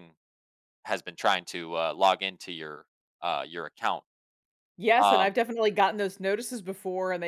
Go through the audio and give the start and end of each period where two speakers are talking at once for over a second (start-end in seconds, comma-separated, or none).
none